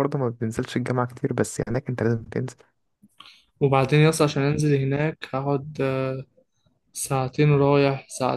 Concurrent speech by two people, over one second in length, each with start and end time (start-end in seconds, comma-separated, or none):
none